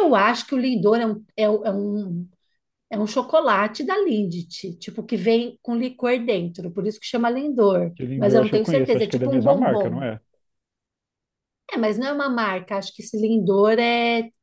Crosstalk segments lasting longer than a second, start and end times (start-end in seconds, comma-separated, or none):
8.0-10.0